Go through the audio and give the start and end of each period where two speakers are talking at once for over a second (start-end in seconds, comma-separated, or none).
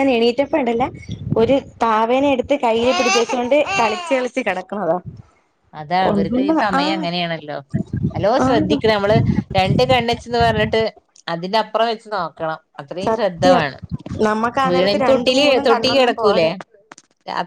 14.7-16.5